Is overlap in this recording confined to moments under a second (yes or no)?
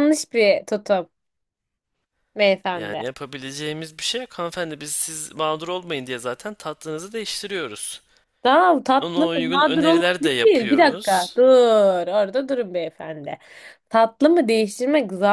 no